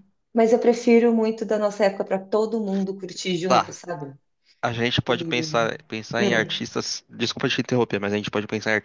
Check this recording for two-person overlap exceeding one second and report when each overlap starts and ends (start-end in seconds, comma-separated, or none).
none